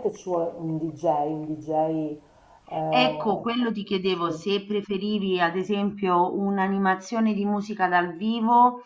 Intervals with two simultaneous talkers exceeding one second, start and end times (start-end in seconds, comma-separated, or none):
none